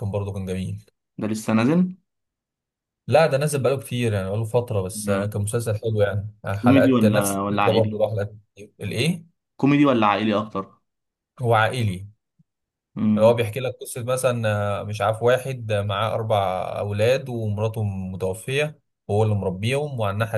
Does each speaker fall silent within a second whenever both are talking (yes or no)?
no